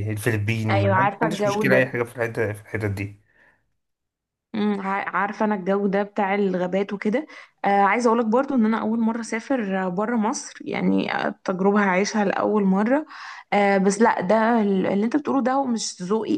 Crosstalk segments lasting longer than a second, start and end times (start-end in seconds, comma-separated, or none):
0.7-1.9